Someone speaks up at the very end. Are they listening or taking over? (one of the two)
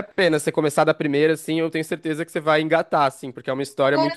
listening